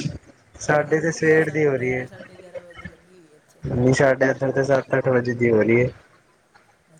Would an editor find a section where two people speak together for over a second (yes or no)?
yes